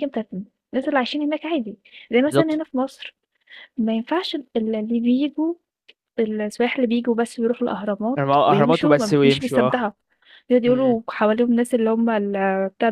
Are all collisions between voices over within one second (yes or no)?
no